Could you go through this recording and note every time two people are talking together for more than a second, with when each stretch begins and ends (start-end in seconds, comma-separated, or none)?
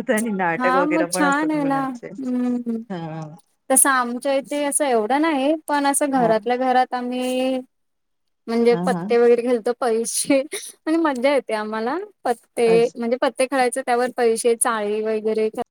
0.6-2.1